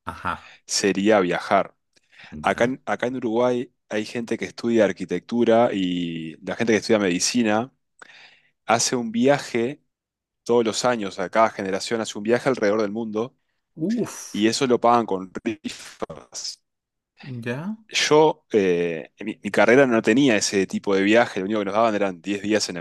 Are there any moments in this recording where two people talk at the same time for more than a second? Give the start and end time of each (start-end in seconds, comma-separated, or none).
none